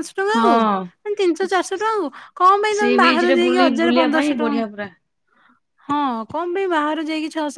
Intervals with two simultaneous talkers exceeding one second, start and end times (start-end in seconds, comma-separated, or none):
2.8-4.9